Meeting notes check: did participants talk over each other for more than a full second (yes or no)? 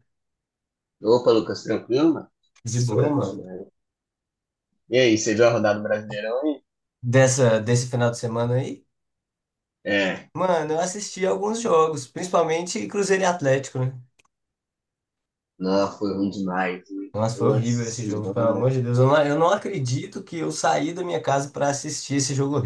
yes